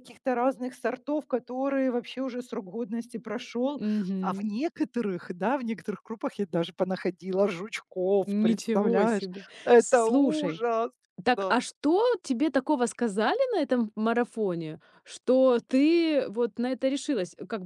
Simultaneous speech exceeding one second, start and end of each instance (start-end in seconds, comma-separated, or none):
8.2-10.6